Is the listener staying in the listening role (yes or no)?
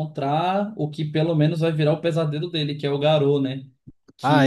no